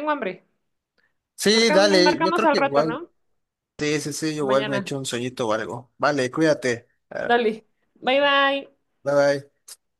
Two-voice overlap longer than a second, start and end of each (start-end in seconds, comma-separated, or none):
1.6-3.0